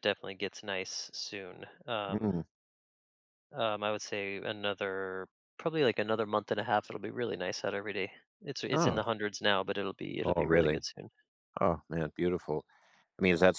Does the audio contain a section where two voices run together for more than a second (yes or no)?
no